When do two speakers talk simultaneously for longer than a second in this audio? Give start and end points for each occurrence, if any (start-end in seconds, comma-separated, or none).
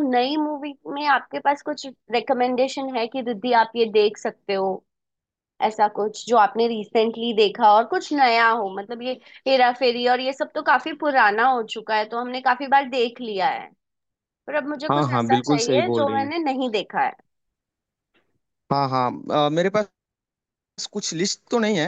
14.9-16.3